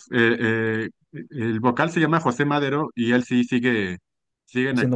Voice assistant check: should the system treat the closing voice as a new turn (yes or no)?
no